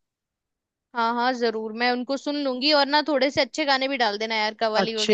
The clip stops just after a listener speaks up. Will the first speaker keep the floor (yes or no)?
no